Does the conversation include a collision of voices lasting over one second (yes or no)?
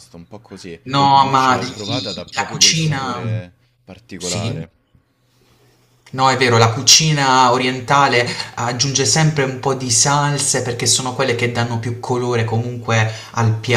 yes